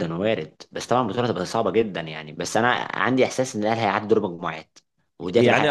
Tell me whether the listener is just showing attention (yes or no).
no